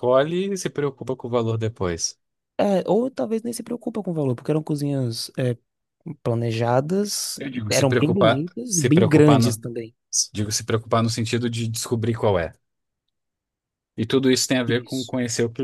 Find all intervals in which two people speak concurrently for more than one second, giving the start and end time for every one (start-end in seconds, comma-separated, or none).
7.4-9.6